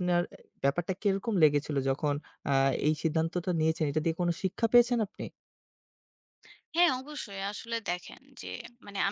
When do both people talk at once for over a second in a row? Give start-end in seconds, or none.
none